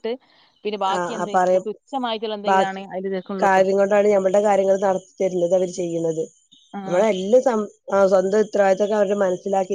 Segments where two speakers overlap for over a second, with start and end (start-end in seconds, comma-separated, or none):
none